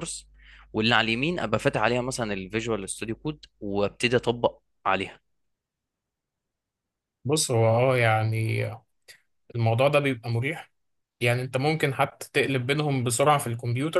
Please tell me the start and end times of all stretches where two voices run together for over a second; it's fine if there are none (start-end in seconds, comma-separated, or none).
none